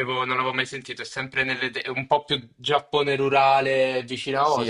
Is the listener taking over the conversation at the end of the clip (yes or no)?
yes